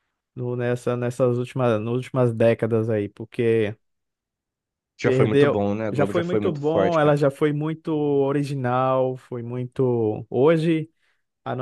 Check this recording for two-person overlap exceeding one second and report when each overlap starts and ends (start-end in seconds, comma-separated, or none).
5.0-7.2